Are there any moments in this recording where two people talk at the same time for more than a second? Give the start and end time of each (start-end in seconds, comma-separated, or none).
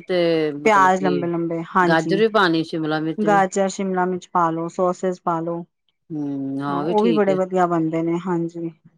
none